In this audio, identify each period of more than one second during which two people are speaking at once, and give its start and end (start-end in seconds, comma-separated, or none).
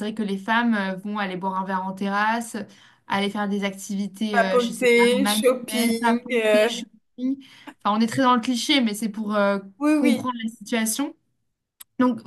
4.3-6.8